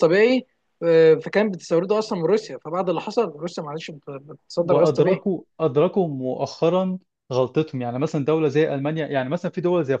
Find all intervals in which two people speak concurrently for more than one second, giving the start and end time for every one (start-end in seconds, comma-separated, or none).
none